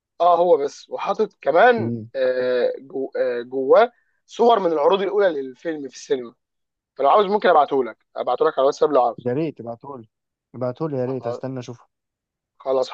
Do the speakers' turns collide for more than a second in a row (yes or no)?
no